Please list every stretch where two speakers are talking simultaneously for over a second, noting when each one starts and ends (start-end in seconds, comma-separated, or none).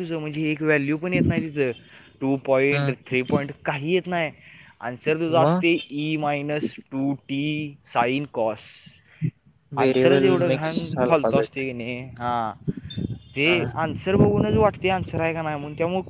9.8-11.6